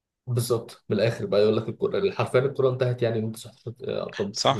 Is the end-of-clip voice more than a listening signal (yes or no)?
yes